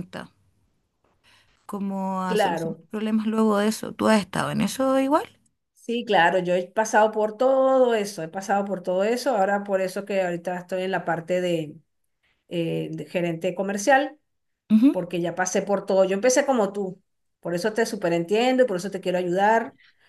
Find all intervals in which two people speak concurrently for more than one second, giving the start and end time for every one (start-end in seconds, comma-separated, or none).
none